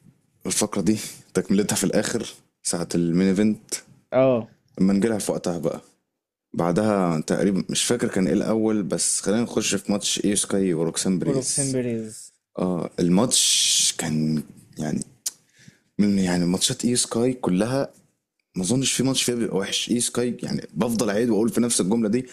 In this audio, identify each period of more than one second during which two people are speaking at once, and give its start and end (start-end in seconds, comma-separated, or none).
none